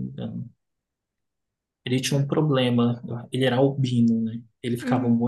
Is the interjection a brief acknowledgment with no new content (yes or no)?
yes